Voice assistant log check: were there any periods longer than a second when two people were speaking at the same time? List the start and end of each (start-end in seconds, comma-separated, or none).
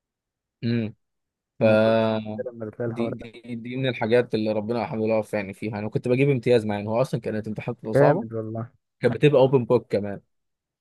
none